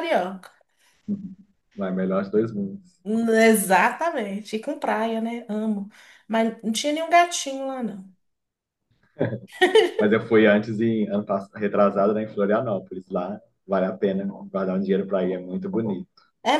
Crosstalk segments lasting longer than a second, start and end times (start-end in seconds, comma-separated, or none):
none